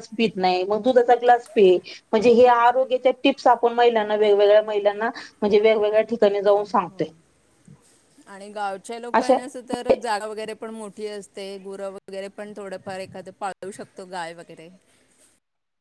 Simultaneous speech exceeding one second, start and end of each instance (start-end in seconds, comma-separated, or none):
none